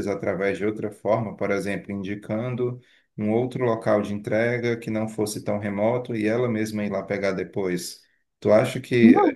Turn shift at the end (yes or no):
no